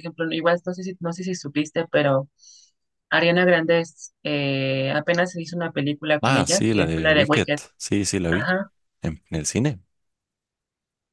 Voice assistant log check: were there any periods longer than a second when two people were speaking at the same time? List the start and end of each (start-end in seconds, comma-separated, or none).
6.2-7.6